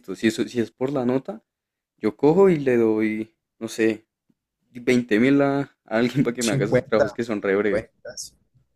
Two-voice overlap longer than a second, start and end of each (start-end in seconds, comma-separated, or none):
6.4-7.9